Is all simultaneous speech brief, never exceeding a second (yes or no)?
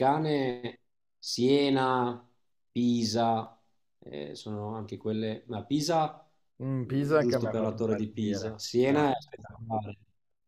no